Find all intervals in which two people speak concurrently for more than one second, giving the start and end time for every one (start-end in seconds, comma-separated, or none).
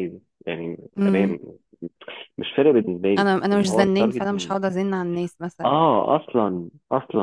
3.2-4.6